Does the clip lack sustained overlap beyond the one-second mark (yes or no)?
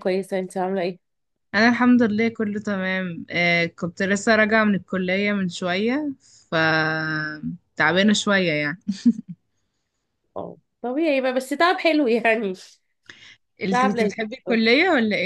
yes